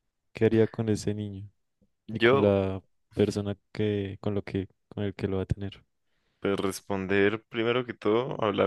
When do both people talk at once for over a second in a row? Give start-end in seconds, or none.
none